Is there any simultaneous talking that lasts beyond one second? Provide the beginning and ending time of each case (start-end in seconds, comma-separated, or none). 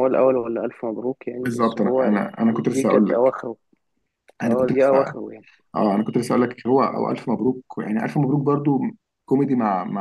1.4-3.2